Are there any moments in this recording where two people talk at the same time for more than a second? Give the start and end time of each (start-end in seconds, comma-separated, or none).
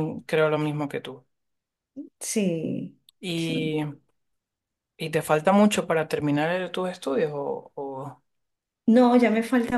none